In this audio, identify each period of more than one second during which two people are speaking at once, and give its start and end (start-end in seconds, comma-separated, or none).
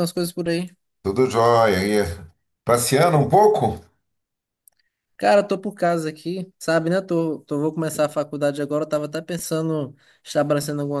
none